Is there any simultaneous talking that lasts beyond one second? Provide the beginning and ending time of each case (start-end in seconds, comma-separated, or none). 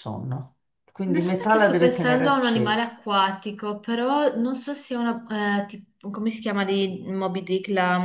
1.1-2.9